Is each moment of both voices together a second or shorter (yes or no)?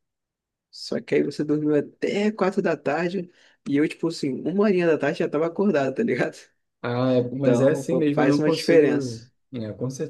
no